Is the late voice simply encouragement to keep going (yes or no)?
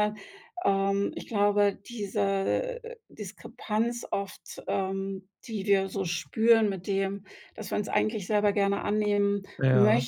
yes